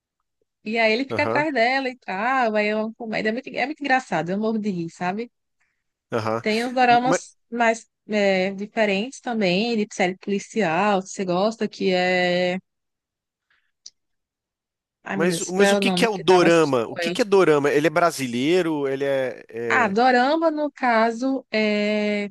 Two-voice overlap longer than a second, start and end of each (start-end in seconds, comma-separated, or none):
15.1-17.2